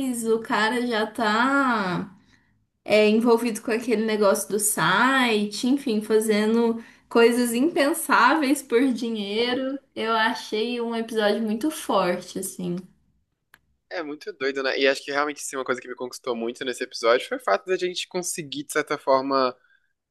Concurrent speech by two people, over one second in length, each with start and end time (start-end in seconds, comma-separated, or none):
none